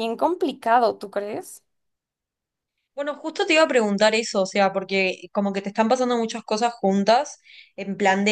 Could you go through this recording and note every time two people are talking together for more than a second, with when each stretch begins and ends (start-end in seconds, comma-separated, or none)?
none